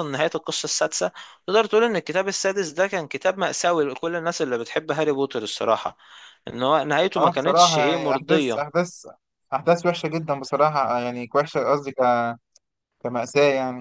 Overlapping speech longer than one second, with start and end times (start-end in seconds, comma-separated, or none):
7.2-8.6